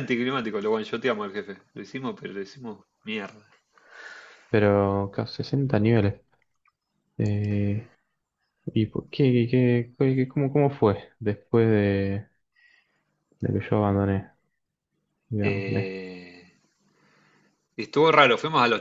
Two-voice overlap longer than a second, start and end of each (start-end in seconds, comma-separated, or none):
none